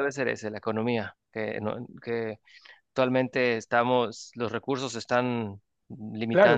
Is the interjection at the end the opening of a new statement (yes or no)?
yes